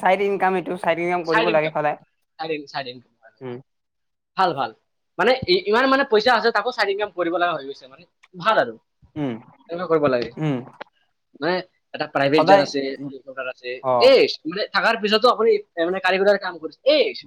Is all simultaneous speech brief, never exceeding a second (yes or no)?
yes